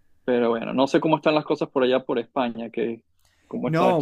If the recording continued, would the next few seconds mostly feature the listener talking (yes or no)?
yes